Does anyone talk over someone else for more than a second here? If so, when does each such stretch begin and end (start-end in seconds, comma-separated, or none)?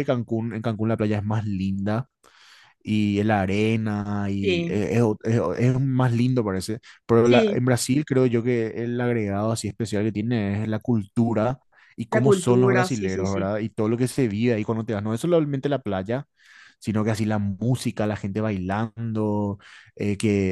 12.1-13.5